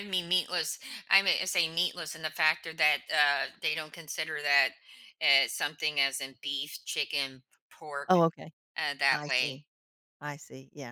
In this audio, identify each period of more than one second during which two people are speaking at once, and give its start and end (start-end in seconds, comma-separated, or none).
none